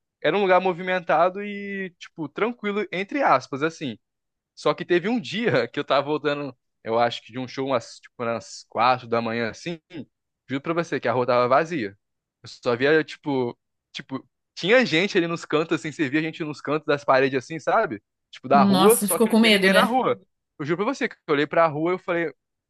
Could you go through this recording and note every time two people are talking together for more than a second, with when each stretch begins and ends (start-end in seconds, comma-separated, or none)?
18.5-20.0